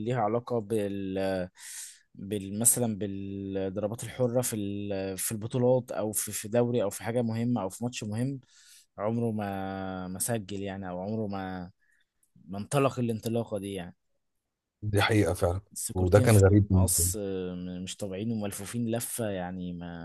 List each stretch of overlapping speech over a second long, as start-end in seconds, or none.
15.7-17.1